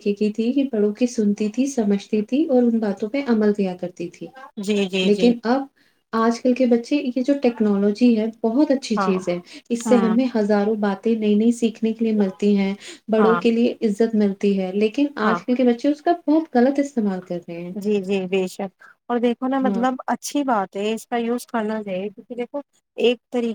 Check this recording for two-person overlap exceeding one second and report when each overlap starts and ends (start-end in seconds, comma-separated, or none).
none